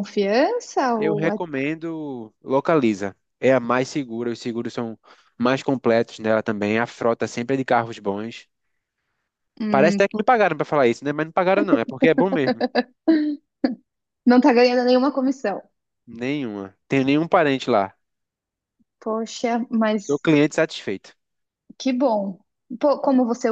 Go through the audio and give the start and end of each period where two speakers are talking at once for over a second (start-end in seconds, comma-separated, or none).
none